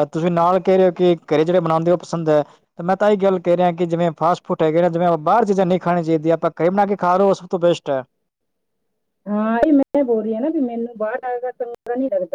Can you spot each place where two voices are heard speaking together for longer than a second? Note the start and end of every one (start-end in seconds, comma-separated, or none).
none